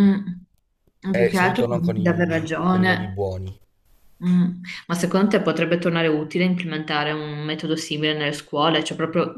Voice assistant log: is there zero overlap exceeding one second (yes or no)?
no